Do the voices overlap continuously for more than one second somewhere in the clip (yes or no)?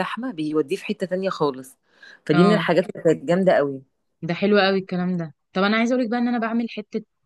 no